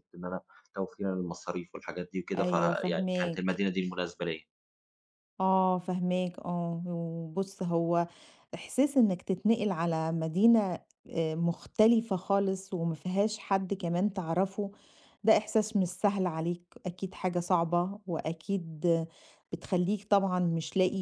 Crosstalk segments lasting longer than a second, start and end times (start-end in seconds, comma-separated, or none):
2.4-3.6